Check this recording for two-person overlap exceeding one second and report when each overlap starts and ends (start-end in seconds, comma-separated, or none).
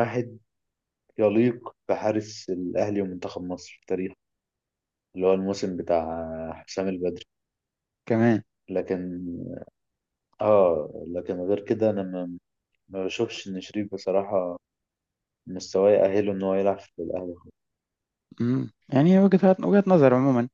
none